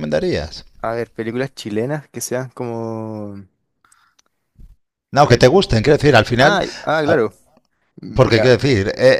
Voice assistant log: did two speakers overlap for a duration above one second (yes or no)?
no